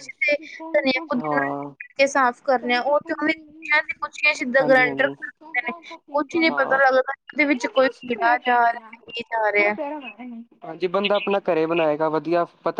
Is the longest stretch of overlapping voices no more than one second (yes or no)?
yes